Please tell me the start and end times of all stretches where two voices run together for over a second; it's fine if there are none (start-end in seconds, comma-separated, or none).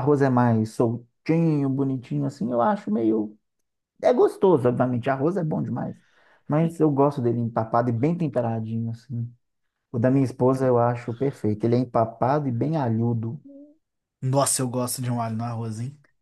none